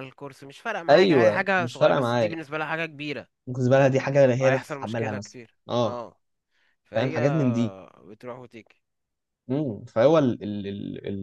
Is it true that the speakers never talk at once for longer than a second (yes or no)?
no